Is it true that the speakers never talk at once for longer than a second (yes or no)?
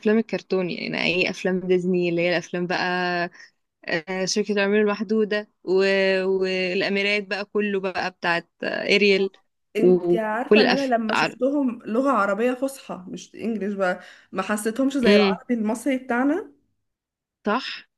no